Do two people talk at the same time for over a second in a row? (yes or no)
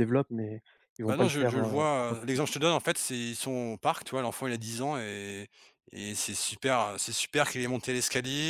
yes